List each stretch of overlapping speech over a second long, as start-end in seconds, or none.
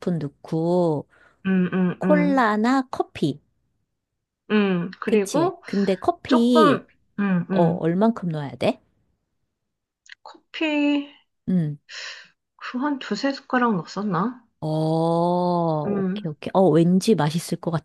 none